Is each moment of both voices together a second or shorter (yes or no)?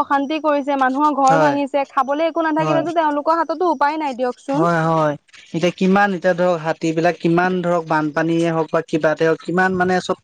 yes